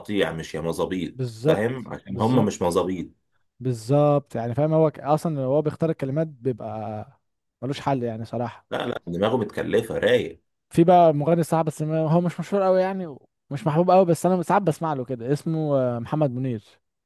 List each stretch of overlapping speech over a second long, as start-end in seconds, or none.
1.1-2.6